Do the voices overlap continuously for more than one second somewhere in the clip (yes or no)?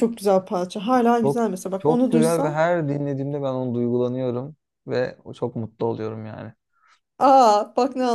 yes